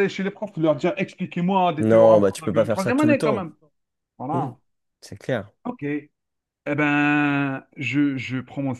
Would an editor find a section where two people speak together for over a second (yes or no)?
yes